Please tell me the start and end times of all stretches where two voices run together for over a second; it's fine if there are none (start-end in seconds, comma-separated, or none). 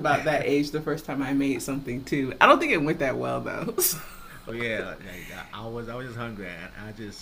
none